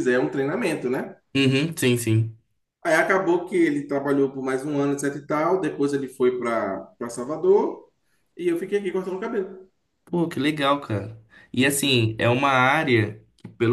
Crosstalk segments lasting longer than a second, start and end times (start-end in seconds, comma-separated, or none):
none